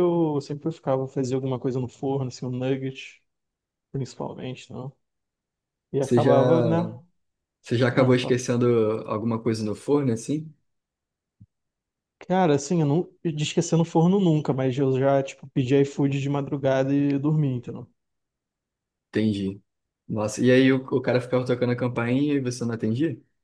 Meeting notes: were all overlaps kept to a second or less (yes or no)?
yes